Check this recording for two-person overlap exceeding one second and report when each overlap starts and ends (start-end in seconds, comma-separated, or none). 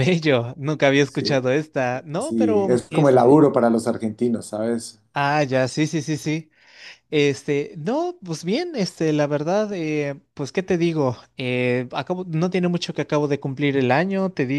2.2-3.5